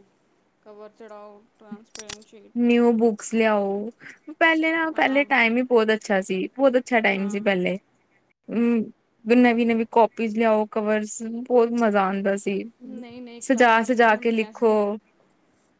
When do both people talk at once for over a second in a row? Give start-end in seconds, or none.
13.5-14.7